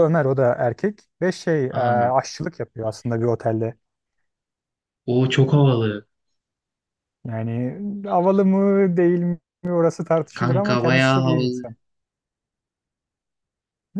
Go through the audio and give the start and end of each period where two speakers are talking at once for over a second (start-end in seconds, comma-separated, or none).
10.3-11.7